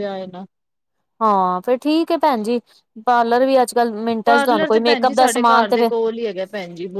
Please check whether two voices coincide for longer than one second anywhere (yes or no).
yes